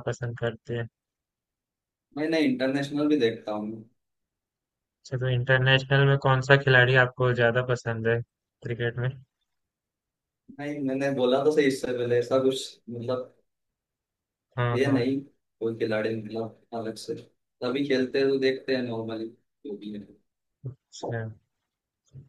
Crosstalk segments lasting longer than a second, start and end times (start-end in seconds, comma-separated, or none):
none